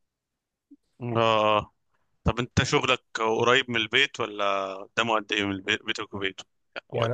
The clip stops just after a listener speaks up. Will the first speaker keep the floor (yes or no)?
no